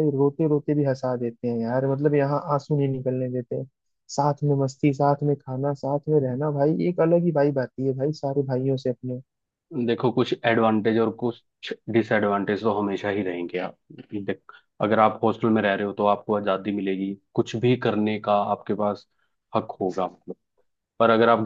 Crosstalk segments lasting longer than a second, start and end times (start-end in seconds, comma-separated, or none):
none